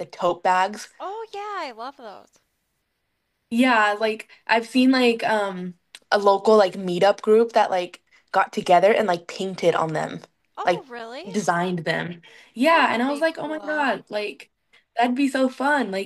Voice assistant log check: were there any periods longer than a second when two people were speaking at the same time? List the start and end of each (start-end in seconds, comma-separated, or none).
12.6-13.9